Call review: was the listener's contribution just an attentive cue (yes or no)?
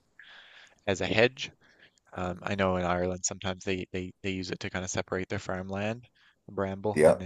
yes